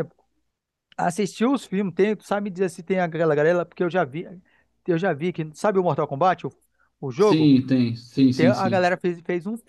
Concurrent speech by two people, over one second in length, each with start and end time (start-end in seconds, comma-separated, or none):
none